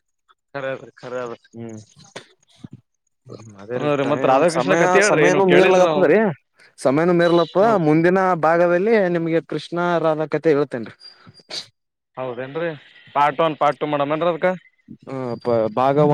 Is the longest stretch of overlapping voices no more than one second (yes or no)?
no